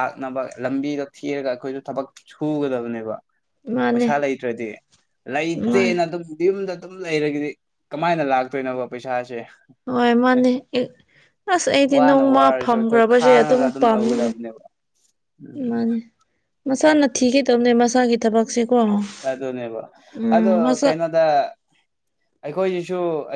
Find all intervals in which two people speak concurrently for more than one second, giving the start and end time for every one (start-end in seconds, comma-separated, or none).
12.0-14.3